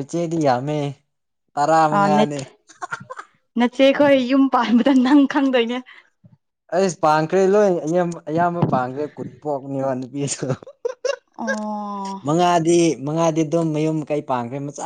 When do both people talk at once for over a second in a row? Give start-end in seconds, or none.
none